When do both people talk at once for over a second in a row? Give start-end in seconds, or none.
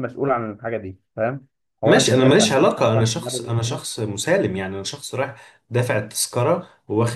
1.8-3.8